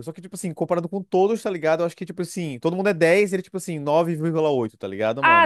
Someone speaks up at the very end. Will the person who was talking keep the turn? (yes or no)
no